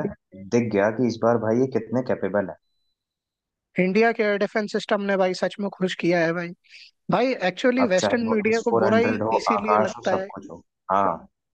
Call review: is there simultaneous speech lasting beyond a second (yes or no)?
yes